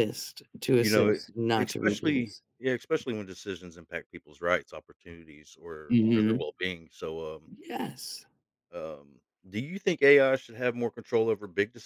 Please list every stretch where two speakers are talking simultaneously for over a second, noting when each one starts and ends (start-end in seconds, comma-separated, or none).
0.8-2.4